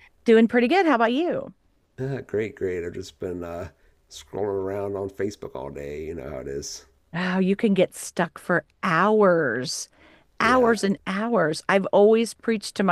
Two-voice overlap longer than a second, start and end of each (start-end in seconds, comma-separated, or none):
none